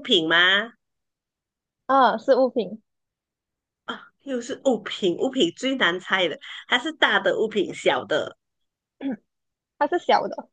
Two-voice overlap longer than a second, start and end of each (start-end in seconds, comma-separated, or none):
none